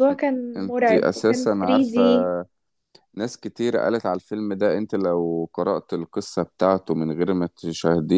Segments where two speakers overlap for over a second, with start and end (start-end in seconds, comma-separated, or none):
0.6-2.0